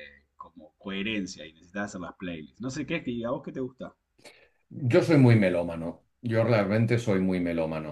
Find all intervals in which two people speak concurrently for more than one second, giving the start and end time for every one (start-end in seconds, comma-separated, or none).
none